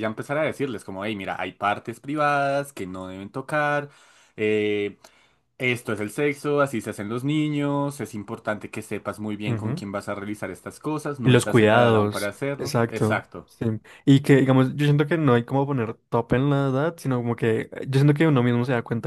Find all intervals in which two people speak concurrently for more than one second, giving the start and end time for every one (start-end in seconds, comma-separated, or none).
11.2-13.5